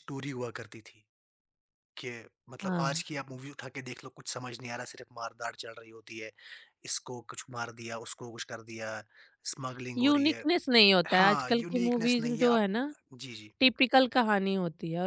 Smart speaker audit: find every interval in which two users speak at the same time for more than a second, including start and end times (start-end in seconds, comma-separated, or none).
11.1-12.7